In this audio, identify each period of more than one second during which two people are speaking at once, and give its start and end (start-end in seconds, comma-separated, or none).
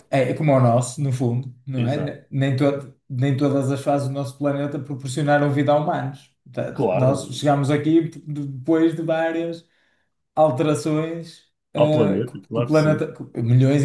11.8-13.1